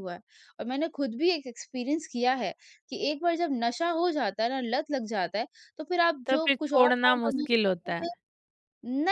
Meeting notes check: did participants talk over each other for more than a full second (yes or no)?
yes